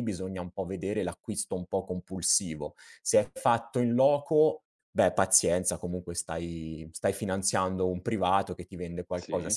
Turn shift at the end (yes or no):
no